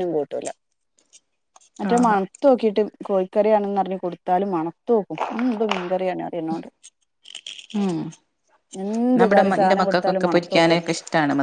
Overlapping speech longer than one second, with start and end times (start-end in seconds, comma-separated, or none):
9.2-10.8